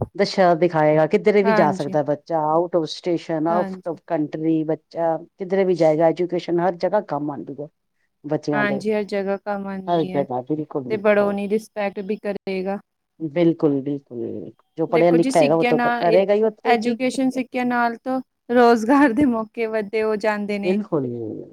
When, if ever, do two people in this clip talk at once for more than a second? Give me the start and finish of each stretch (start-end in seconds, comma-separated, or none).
none